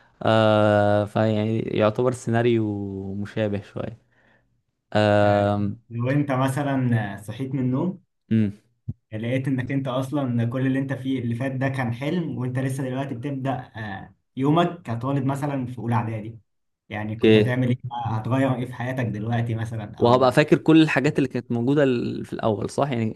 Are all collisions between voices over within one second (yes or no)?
yes